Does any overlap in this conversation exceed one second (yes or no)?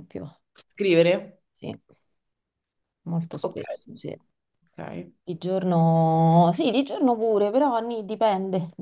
no